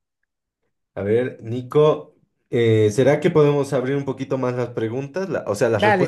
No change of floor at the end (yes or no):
no